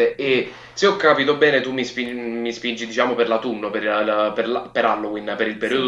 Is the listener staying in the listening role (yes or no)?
no